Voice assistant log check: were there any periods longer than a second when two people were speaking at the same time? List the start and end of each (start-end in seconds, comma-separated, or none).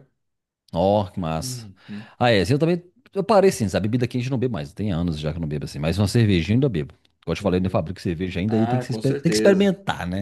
8.5-9.7